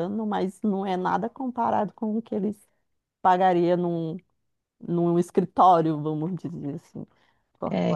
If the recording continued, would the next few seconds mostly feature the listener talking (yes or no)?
yes